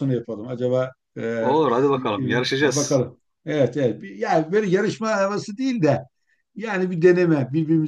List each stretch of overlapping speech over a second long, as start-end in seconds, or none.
1.4-3.0